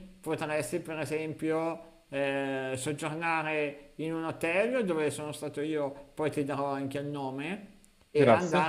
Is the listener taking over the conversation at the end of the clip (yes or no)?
no